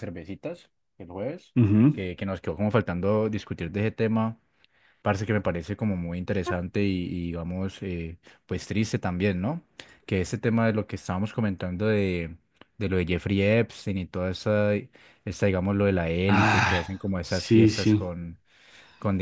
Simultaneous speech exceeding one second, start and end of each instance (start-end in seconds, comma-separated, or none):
16.3-18.1